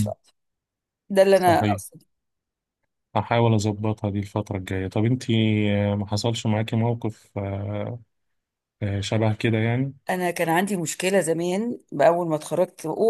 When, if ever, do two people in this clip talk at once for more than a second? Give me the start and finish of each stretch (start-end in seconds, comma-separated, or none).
none